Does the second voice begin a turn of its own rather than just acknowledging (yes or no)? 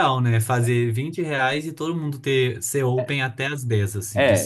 yes